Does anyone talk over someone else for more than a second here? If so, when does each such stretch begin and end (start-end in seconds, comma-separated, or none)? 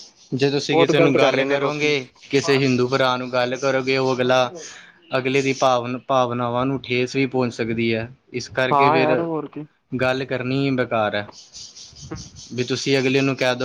0.7-2.0